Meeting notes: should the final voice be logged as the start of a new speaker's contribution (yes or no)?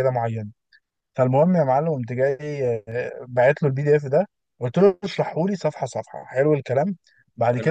no